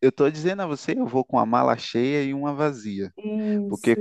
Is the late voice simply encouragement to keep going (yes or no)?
yes